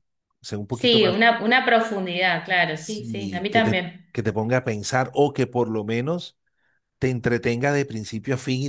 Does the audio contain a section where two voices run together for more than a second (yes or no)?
yes